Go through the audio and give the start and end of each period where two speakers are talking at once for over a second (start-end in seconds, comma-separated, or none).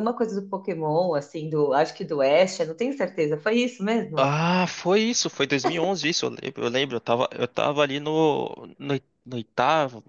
none